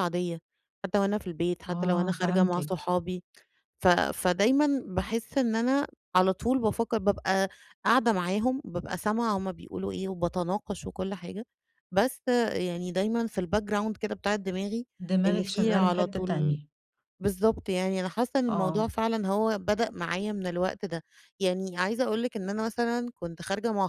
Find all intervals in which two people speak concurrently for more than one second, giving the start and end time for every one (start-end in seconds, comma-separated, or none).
1.7-2.9, 15.3-16.6